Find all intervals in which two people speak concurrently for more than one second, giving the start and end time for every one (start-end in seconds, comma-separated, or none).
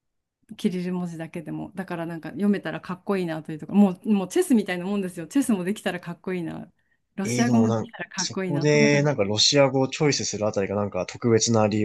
7.2-9.1